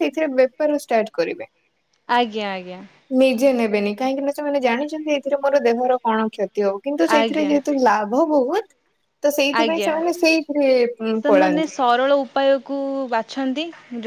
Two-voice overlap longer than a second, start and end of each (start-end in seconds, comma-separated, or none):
none